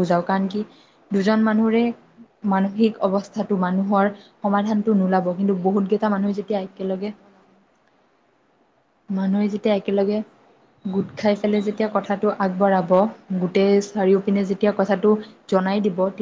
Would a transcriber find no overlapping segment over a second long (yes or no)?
no